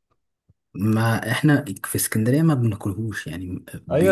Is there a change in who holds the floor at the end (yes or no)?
yes